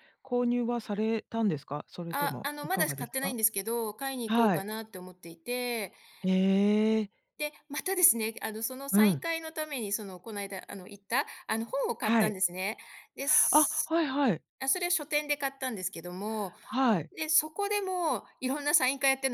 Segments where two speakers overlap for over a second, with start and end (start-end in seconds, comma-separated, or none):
2.1-3.4